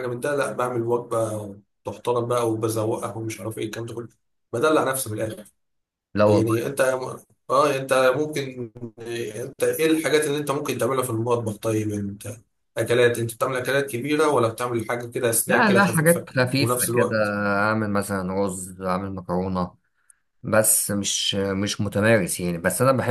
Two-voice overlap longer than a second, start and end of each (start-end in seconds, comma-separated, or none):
15.5-17.1